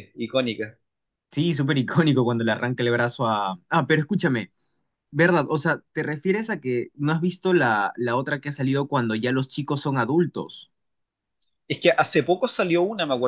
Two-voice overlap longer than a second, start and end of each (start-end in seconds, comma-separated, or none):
none